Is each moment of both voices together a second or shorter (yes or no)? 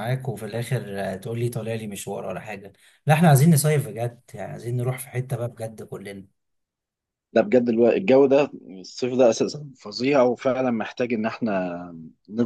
yes